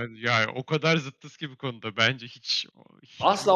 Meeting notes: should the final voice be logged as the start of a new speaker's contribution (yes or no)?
yes